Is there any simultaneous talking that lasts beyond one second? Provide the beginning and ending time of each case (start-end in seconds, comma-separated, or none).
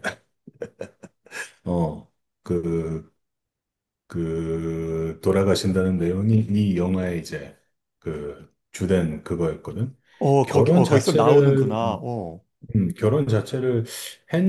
10.4-11.8